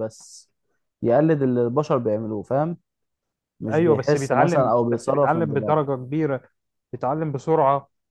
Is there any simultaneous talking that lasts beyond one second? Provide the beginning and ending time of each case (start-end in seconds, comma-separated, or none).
3.7-5.8